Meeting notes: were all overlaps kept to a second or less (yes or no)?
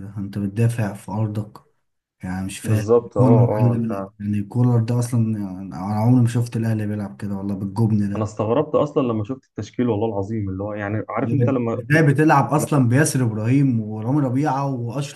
no